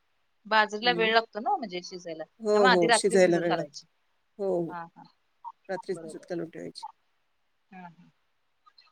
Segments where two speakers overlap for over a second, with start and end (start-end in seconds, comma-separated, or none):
2.4-3.8